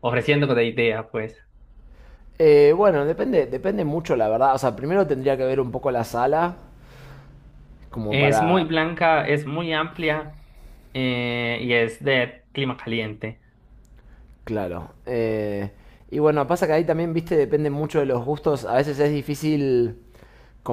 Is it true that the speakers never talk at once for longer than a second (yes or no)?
yes